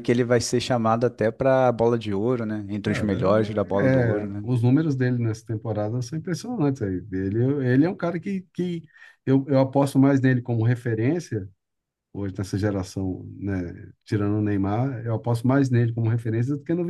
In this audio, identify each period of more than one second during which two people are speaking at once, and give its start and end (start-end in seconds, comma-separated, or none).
2.9-4.5